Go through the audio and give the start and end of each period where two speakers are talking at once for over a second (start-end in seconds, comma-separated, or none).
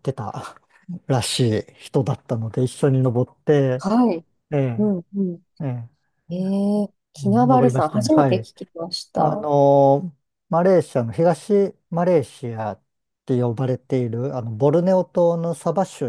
7.2-8.5